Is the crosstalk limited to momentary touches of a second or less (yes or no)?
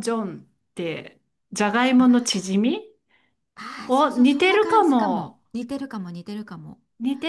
no